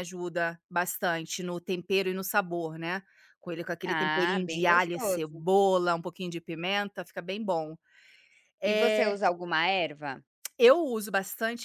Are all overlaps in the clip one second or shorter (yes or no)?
no